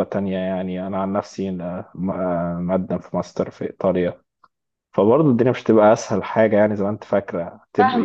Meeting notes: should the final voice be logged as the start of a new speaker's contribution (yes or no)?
yes